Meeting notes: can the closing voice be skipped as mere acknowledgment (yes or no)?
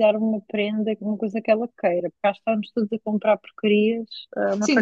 no